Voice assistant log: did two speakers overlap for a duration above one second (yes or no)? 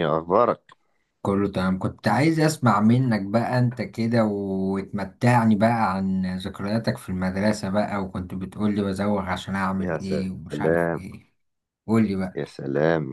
yes